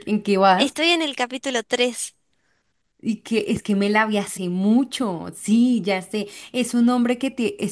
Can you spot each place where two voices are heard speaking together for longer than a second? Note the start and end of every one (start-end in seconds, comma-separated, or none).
none